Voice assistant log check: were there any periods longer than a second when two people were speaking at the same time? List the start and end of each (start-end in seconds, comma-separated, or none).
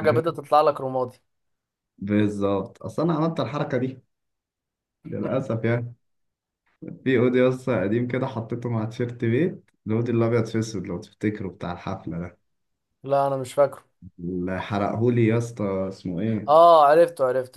none